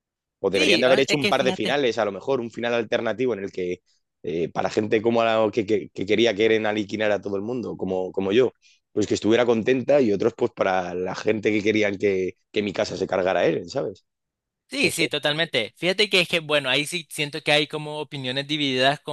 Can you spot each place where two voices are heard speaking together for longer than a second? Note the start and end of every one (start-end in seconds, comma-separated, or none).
0.5-1.8